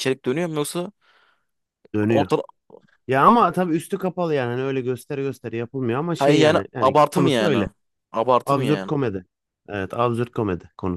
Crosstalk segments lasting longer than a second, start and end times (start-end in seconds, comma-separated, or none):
6.2-7.7